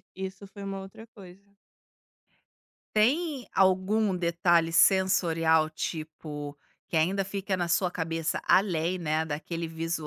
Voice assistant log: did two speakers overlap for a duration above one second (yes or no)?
no